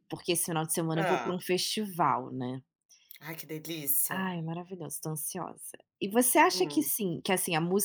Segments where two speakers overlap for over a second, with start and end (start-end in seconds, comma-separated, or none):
none